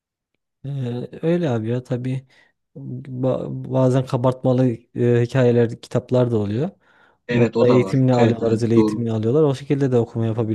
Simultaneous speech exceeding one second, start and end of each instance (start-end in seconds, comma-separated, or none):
7.3-9.1